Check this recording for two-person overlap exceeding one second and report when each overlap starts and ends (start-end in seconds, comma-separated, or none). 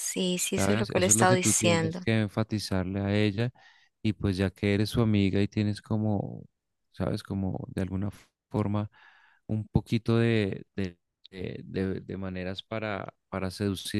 0.5-2.0